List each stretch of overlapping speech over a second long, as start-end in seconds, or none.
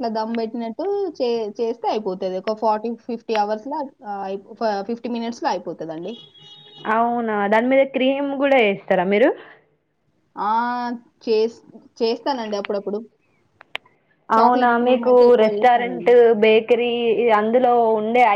14.4-16.1